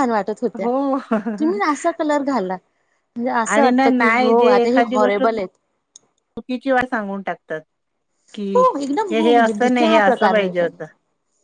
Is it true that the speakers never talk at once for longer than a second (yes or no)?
no